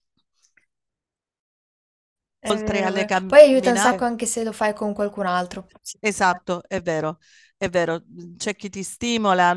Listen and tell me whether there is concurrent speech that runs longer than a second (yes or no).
yes